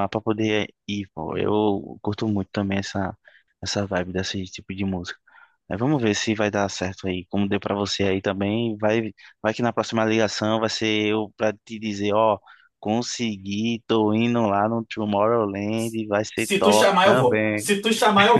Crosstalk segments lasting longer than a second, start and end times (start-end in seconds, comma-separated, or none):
16.3-17.7